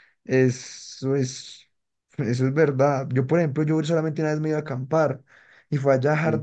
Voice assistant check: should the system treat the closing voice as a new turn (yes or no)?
no